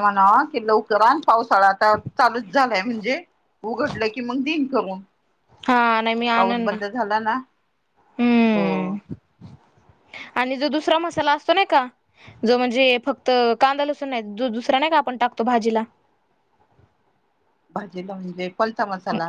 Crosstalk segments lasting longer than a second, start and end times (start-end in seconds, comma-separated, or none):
none